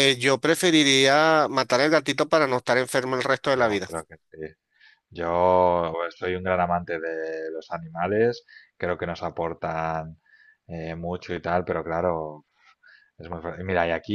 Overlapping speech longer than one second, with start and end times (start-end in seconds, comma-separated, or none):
none